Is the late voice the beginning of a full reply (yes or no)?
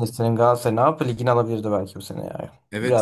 yes